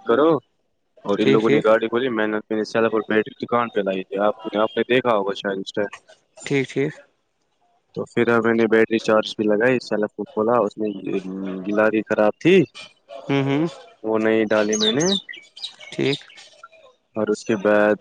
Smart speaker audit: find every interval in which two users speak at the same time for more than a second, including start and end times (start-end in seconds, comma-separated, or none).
none